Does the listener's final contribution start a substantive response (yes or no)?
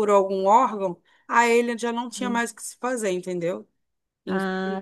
yes